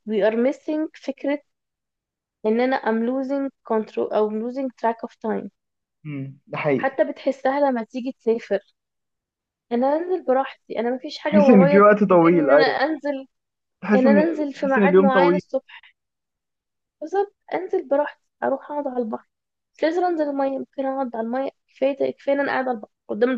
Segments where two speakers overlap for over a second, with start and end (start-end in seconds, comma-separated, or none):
11.2-12.8, 13.9-15.4